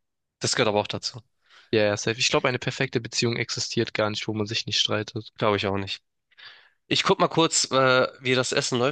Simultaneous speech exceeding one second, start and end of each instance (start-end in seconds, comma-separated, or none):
none